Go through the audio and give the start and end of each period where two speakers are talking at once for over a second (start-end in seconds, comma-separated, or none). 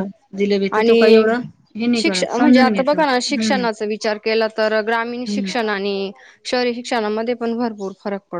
2.0-3.6